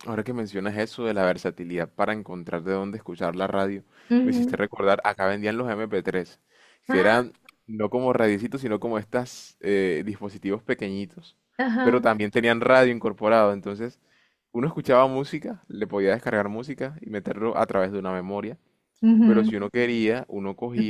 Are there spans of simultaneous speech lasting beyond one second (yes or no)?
no